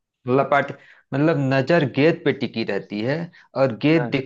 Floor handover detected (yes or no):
no